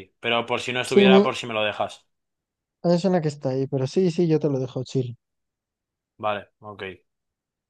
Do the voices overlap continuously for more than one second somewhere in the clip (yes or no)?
no